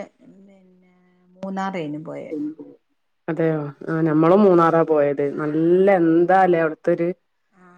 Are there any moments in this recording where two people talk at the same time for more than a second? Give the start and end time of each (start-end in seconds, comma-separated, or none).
none